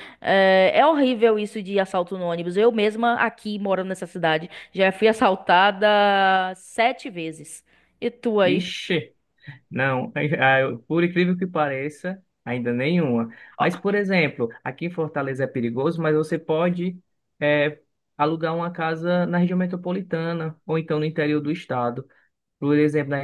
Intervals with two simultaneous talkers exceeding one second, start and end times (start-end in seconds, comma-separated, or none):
none